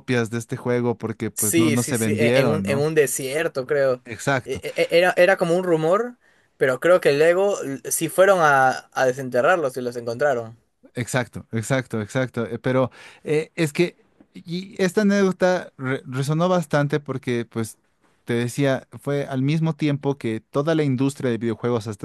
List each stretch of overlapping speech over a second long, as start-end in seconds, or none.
1.3-2.9